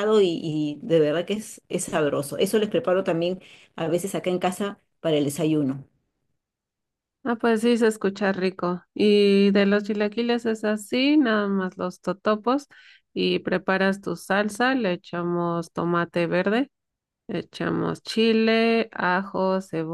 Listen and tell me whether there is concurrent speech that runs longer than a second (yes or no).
no